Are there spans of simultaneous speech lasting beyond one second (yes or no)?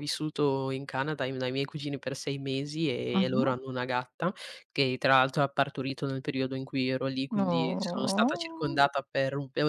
yes